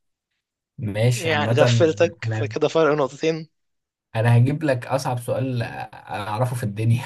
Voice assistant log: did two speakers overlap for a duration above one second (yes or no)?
yes